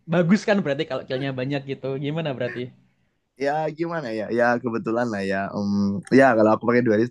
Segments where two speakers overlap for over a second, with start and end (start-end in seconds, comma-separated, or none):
none